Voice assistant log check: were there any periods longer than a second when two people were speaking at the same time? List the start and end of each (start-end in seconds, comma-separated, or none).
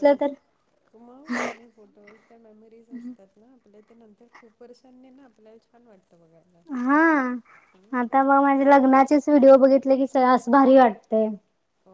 none